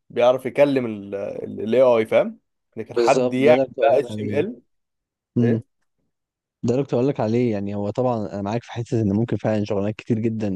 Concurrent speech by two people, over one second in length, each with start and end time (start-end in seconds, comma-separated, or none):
3.0-4.5